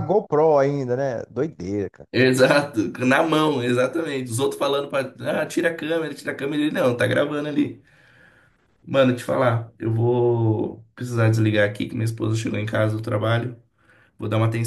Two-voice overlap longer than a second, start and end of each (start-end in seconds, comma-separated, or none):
none